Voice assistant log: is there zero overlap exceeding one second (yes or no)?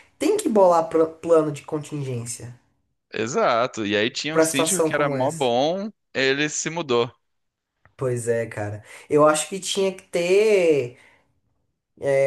no